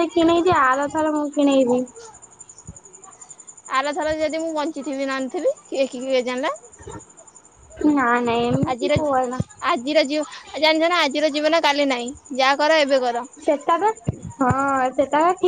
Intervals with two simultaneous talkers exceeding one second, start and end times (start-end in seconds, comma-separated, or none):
none